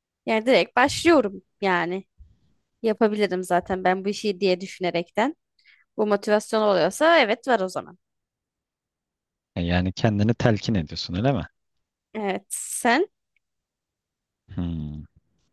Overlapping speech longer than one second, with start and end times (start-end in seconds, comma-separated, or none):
none